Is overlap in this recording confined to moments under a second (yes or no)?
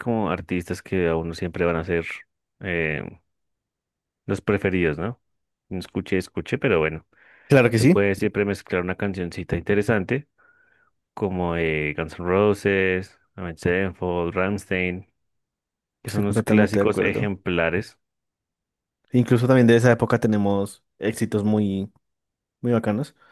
no